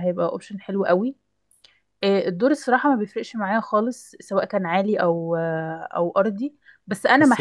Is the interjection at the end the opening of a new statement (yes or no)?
no